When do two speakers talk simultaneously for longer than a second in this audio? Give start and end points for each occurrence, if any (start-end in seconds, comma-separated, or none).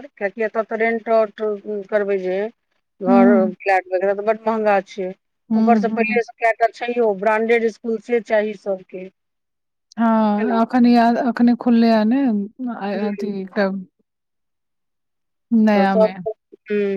none